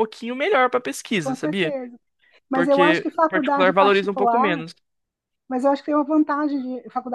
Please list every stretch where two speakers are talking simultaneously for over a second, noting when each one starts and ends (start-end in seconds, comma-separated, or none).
2.5-4.7